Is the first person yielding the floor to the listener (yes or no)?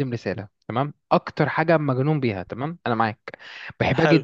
no